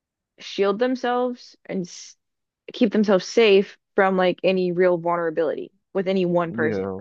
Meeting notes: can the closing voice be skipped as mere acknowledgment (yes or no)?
no